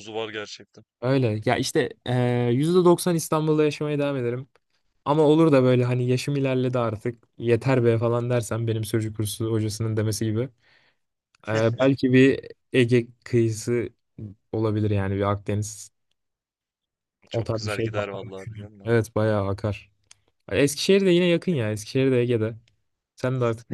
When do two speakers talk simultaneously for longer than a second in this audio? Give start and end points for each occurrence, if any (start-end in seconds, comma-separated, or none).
17.3-18.9